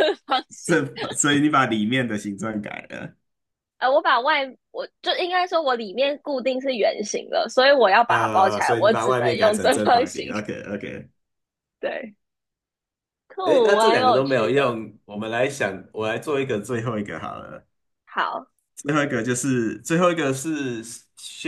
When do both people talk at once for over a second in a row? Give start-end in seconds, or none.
8.1-10.3, 13.4-14.8